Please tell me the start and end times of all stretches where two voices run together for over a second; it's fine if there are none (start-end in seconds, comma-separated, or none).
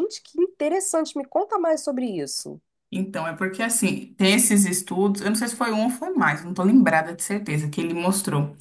none